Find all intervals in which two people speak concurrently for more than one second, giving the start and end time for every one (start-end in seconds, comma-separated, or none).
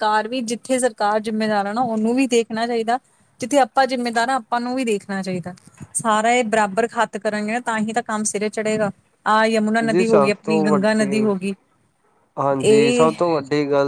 9.9-11.3